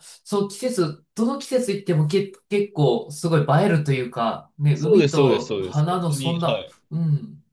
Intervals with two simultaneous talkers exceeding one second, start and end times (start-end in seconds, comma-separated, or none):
4.7-6.7